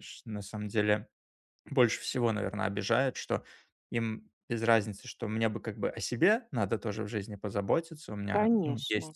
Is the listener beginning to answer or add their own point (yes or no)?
no